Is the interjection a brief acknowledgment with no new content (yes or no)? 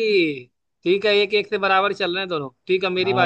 no